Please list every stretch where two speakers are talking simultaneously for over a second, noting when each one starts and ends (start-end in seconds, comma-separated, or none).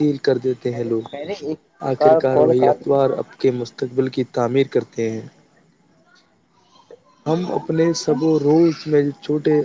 0.7-2.8